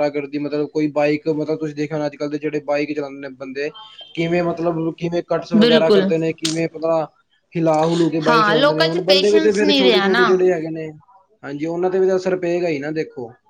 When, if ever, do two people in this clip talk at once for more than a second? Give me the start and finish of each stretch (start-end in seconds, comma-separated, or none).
8.3-10.2